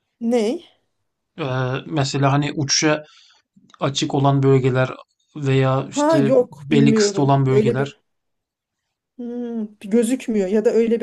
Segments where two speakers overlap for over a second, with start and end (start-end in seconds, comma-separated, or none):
5.9-7.9